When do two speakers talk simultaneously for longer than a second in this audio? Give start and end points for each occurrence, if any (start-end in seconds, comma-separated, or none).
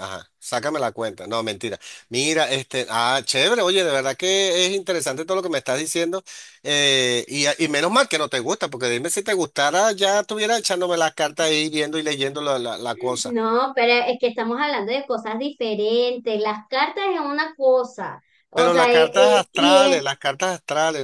18.5-20.0